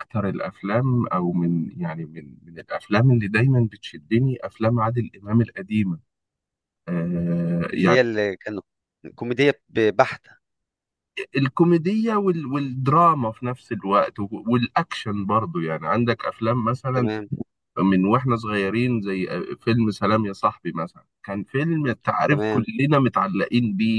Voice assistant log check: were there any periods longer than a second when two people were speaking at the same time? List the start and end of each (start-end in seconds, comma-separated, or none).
none